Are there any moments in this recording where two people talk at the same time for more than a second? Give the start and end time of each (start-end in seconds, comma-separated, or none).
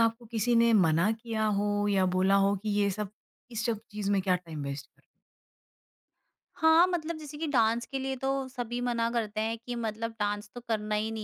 none